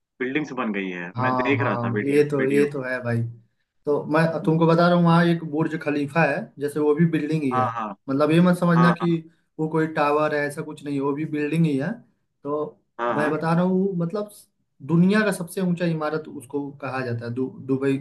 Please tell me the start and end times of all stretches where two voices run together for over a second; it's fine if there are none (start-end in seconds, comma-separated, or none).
1.2-2.7